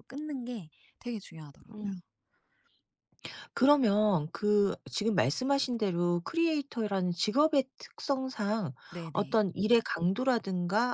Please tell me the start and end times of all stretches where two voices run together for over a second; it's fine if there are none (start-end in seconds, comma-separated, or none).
none